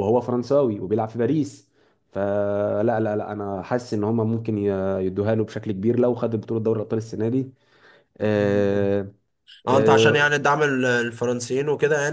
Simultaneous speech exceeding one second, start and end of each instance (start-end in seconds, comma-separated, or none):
none